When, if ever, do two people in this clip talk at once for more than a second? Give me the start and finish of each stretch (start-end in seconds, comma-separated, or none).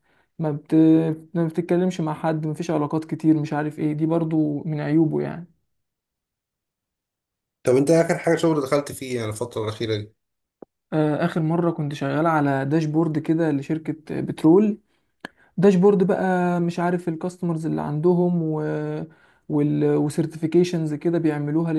none